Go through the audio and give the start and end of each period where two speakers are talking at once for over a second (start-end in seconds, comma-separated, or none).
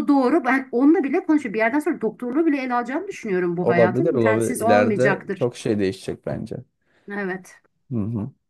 3.6-5.5